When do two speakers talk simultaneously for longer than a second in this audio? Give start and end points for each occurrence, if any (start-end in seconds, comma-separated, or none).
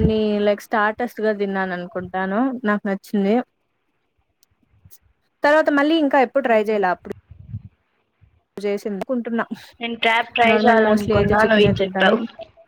10.5-12.2